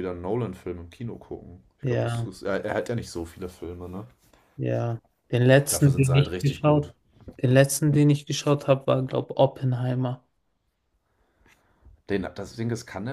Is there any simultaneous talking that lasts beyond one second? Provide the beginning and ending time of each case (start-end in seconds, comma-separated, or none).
5.7-6.9